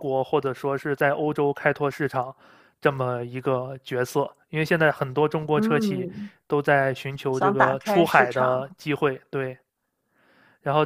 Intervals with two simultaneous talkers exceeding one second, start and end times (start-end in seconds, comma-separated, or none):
7.3-8.8